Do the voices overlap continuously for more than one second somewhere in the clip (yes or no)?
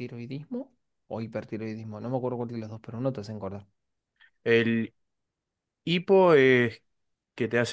no